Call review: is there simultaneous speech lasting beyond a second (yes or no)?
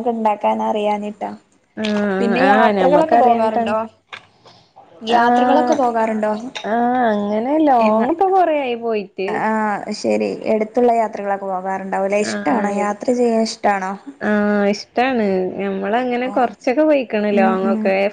yes